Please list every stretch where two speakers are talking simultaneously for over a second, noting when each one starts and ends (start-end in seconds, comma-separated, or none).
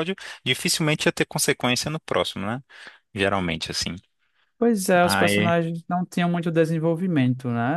none